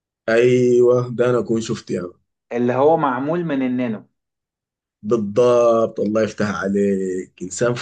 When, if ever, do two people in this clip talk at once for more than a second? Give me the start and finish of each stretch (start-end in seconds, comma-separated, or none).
none